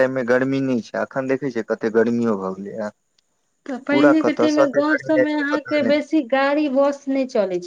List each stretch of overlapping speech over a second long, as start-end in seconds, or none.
none